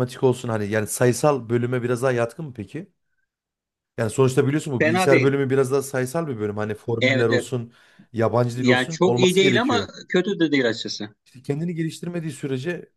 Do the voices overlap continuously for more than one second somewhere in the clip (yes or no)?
yes